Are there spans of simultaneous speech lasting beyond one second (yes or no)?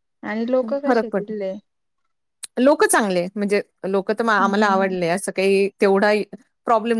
no